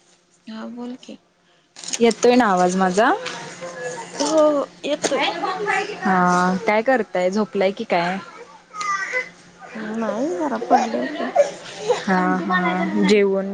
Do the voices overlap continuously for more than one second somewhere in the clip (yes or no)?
no